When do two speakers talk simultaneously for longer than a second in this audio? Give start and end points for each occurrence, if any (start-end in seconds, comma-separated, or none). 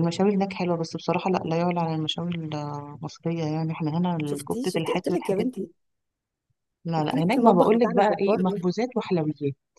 4.2-5.7, 7.0-8.7